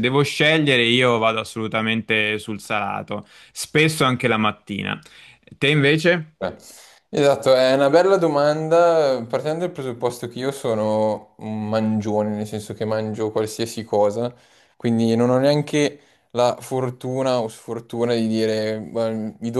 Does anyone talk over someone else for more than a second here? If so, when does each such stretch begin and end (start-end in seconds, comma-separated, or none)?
none